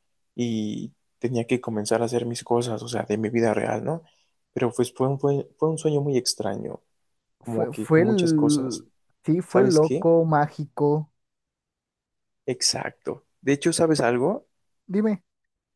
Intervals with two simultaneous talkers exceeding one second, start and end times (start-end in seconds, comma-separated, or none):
7.4-8.8